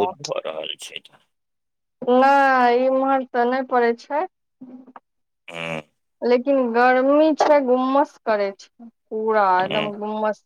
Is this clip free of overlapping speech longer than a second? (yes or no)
yes